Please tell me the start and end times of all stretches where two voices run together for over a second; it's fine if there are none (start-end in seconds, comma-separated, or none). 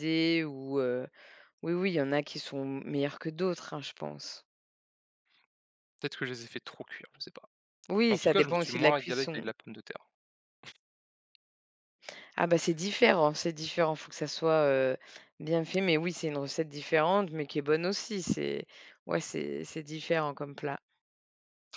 8.1-9.4